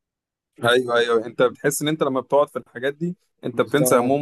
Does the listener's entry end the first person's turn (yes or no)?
yes